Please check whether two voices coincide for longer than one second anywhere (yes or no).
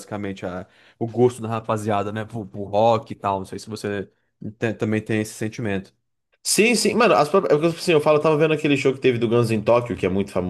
no